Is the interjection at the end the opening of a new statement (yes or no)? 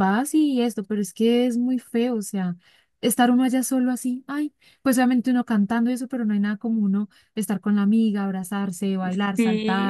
yes